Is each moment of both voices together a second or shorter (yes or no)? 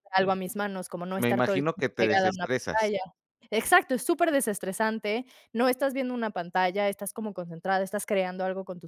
no